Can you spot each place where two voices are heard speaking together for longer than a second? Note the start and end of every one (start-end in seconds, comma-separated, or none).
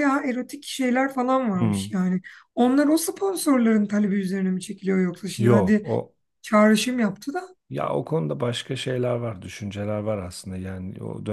none